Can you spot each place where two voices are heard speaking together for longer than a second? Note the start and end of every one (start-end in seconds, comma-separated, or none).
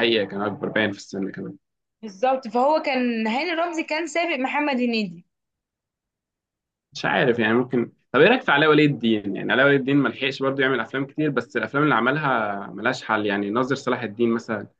none